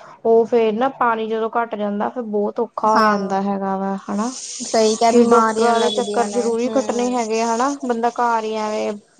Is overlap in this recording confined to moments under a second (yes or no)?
no